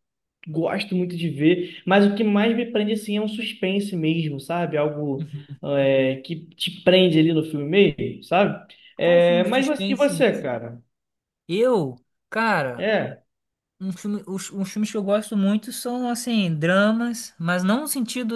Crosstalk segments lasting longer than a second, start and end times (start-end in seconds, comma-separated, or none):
9.0-10.2